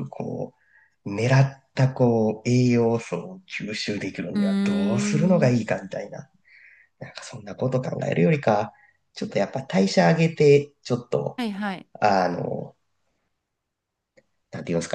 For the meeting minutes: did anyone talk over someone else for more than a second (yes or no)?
yes